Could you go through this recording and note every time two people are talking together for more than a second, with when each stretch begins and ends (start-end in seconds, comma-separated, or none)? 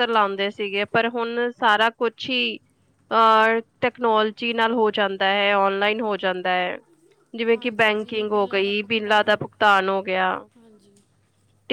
7.5-9.4